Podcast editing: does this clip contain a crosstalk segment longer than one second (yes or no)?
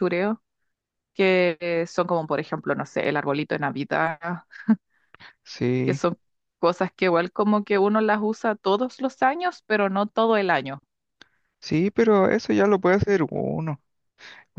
no